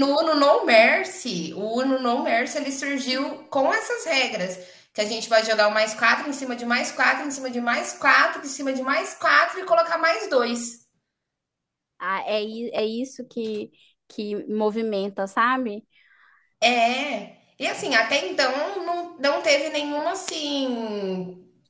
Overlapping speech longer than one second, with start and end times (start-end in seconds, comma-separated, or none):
none